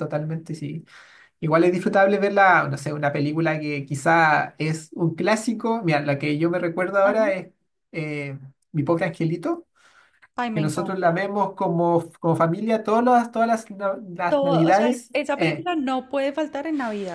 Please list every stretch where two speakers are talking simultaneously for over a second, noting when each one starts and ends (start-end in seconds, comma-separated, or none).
14.3-15.7